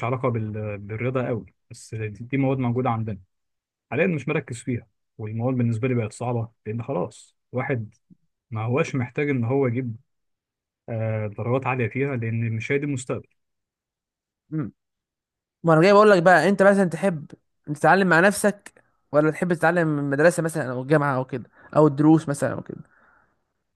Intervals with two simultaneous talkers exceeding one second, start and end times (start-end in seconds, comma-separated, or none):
none